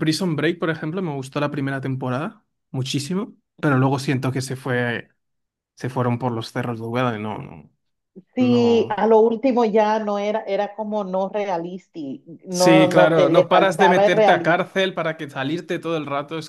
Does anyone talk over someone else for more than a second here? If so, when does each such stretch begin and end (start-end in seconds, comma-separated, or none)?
12.5-14.6